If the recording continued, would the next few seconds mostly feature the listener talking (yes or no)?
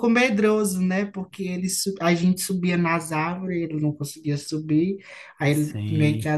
no